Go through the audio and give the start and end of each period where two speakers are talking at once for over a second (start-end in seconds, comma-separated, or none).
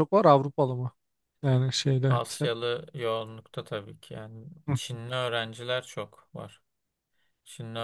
none